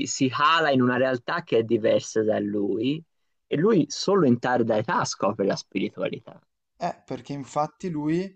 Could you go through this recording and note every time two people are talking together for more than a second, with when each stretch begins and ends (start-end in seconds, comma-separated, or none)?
none